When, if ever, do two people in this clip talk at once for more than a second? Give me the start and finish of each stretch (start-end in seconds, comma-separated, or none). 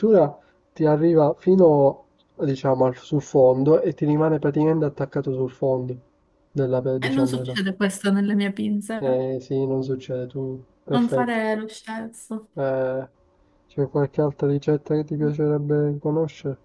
none